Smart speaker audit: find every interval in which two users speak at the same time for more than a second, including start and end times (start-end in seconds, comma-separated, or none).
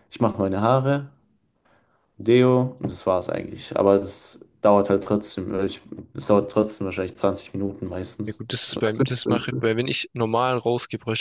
8.2-9.7